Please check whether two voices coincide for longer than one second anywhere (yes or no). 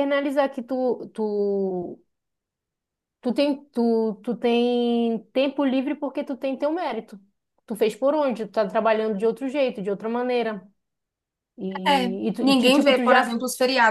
yes